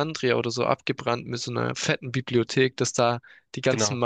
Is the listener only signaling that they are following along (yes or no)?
yes